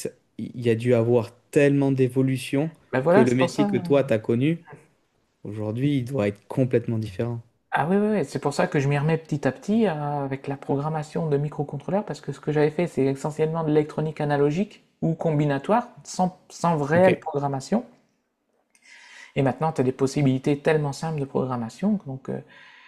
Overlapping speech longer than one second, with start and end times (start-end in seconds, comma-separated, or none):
none